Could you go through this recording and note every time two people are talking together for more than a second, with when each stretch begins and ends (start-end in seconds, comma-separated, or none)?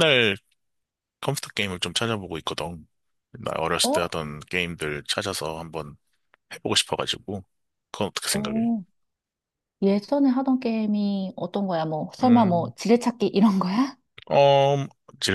none